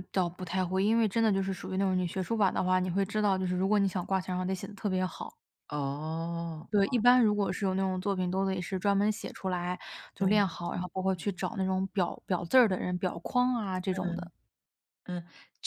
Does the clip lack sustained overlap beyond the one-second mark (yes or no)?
yes